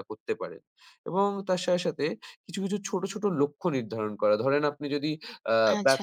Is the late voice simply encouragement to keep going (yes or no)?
yes